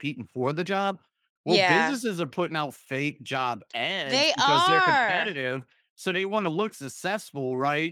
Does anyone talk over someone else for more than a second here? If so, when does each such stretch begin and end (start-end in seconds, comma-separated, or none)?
4.0-5.3